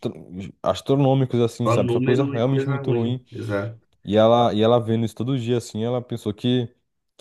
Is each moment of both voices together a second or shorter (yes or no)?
no